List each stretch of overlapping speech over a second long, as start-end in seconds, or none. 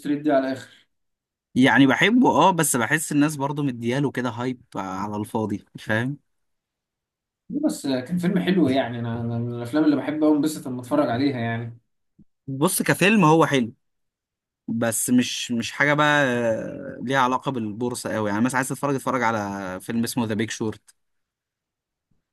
none